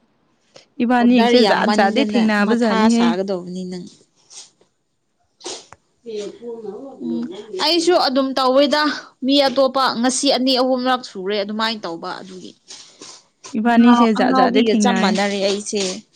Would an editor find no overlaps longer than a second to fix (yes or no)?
yes